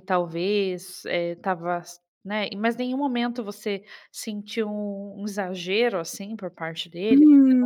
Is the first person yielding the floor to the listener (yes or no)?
yes